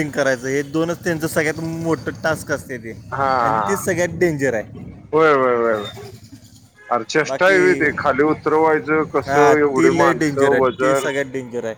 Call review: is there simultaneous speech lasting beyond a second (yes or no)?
yes